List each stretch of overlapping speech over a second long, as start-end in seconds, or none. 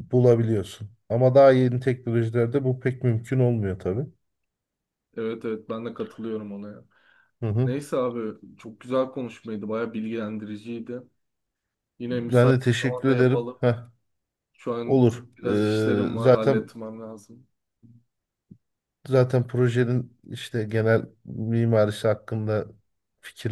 12.1-13.6, 14.8-16.7